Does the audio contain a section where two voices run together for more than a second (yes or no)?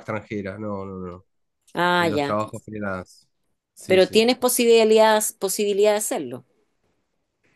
no